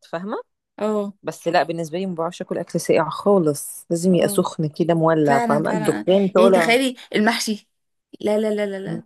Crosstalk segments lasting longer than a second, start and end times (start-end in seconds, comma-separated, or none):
5.2-6.8